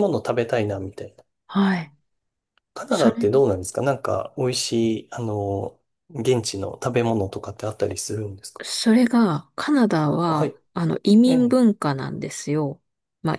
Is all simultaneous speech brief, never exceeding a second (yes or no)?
yes